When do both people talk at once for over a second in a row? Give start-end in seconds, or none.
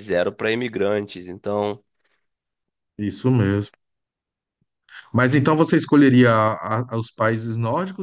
none